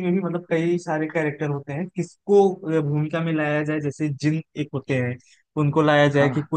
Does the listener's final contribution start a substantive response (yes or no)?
no